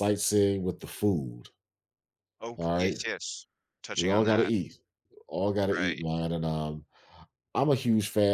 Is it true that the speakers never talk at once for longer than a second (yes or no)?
yes